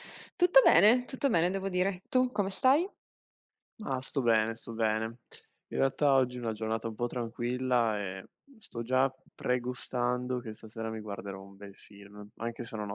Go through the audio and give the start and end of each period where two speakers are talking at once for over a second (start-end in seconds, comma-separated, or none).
none